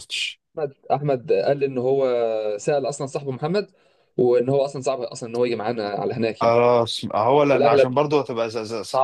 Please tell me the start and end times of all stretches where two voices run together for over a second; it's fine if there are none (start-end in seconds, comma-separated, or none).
none